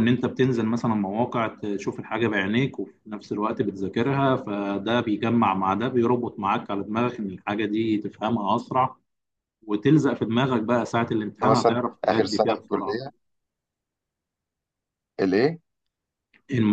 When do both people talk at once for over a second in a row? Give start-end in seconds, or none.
11.4-13.0